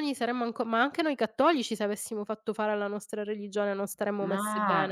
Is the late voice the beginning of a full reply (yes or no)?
yes